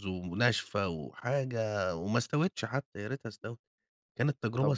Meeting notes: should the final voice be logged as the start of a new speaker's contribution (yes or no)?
yes